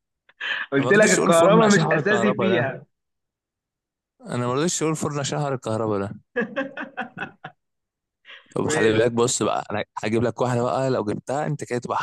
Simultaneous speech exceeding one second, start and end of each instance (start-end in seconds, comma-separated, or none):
0.8-2.7